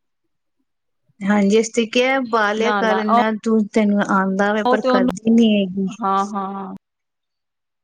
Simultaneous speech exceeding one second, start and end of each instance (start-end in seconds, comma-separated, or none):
none